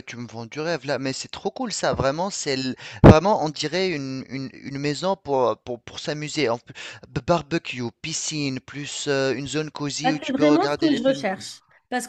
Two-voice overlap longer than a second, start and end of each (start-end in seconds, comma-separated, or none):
10.0-11.2